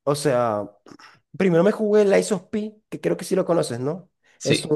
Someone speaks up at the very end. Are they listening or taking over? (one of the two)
listening